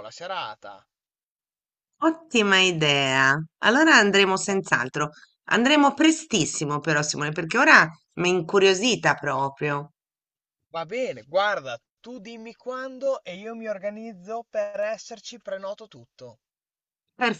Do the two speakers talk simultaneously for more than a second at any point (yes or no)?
no